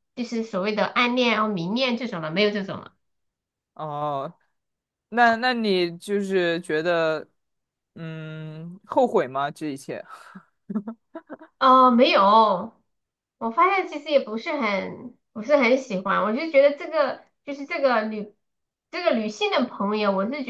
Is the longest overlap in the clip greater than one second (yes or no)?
no